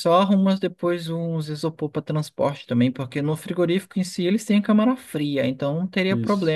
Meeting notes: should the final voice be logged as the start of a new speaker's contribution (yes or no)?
no